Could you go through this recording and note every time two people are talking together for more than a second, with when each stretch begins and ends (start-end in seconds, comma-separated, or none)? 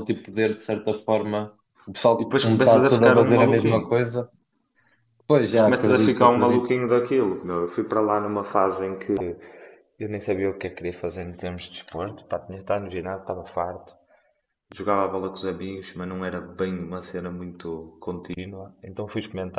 2.2-3.9, 5.4-6.7